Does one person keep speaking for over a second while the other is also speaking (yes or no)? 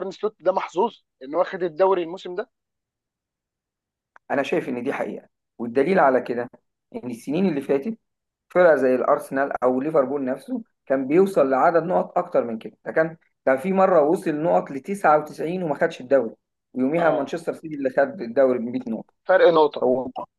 no